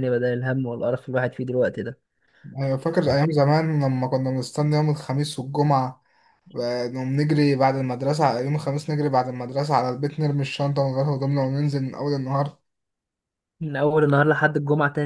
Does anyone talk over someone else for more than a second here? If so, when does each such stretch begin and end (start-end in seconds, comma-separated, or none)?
none